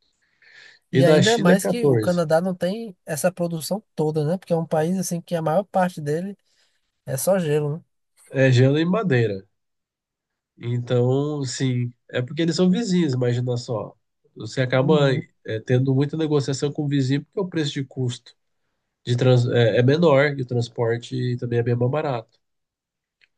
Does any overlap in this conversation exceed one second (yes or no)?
yes